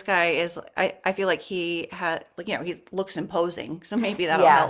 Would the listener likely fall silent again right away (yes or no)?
no